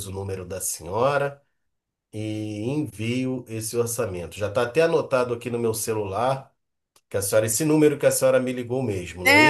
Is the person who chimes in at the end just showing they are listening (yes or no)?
no